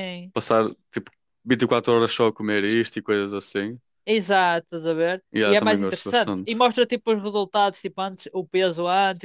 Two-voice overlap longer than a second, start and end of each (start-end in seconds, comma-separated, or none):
5.3-6.6